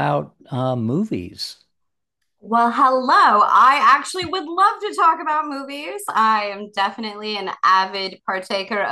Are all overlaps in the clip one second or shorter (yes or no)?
yes